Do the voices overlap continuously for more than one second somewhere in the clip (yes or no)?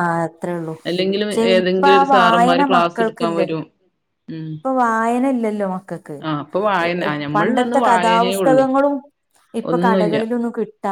yes